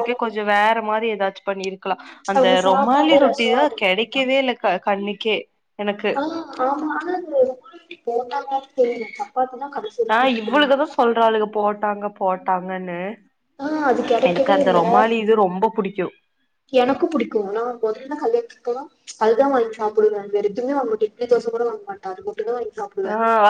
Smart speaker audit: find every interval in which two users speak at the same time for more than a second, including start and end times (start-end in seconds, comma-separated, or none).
2.4-4.3